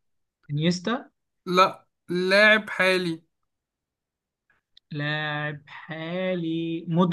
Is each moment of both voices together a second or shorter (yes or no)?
yes